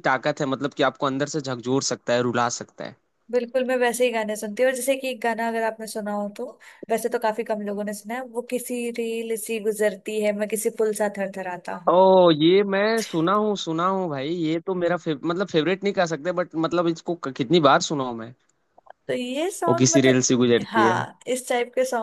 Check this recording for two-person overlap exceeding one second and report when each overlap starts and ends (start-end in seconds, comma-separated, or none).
19.7-21.0